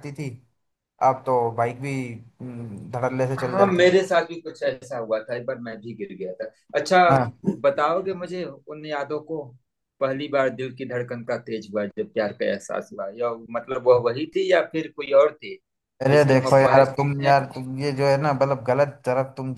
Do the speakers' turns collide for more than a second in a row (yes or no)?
yes